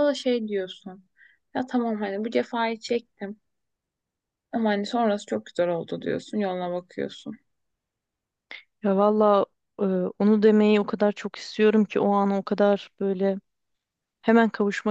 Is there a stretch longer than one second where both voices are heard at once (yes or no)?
no